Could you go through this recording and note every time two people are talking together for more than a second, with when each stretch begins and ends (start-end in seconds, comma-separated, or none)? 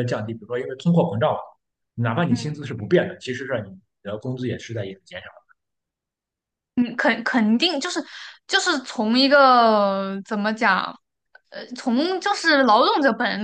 none